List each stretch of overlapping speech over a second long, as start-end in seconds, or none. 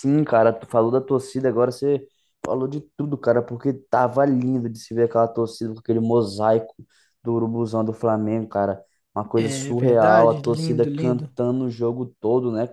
9.4-11.3